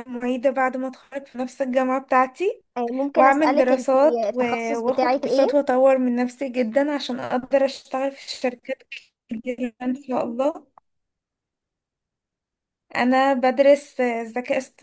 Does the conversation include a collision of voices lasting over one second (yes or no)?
yes